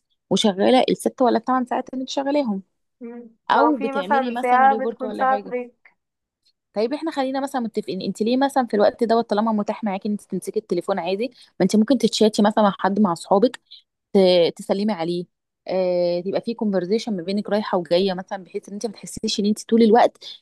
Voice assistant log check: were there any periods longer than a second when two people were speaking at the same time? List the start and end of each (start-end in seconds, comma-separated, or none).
3.5-5.5